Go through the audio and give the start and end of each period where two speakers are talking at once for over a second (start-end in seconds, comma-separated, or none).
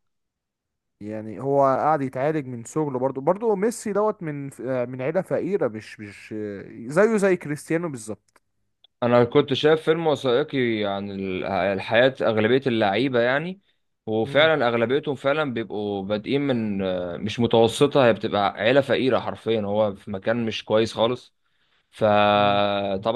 none